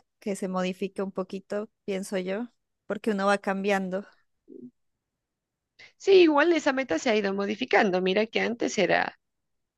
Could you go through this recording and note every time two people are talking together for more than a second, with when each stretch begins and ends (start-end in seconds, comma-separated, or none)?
none